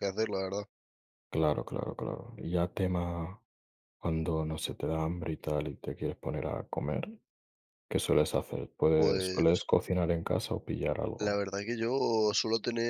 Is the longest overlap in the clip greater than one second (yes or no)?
no